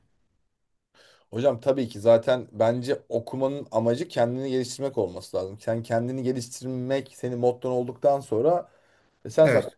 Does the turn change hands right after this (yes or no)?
no